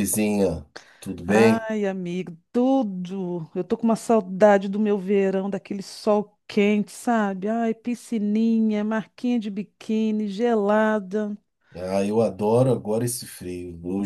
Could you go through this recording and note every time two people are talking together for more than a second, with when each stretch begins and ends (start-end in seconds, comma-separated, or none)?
none